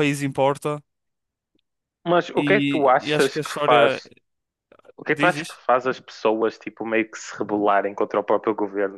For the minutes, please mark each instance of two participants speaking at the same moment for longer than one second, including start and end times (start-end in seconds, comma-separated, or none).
2.4-4.0